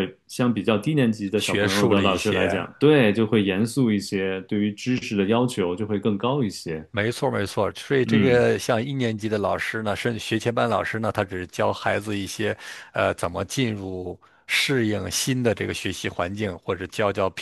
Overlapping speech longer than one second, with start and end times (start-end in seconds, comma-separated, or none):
1.4-2.7